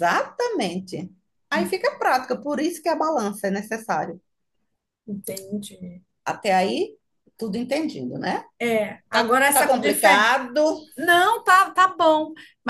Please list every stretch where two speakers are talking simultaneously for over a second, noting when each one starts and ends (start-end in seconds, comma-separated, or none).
9.1-10.3